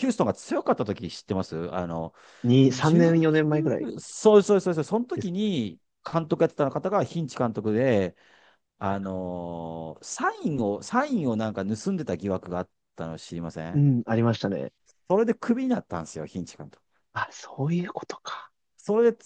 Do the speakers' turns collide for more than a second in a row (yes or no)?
yes